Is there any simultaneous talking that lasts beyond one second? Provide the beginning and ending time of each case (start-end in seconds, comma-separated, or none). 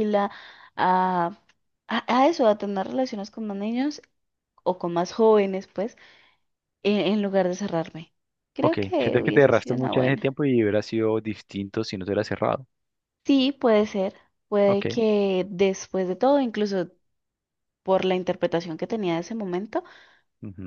8.6-10.3